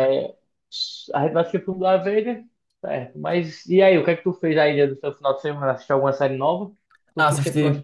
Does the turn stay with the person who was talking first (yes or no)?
no